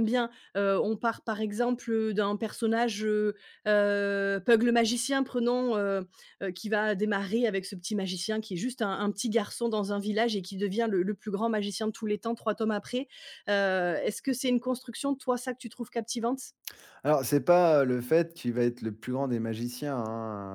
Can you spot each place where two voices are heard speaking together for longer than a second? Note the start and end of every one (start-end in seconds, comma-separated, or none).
none